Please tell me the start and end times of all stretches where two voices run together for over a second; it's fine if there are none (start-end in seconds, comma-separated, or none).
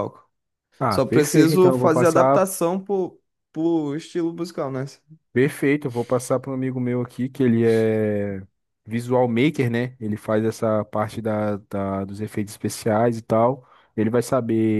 0.9-2.4